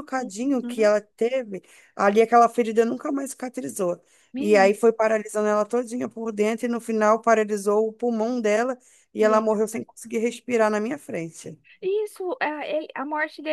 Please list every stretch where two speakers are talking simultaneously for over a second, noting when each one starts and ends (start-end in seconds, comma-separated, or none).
none